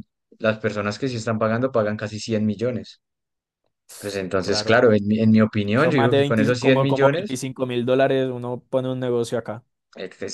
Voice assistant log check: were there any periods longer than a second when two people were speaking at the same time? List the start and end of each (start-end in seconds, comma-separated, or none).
5.7-7.4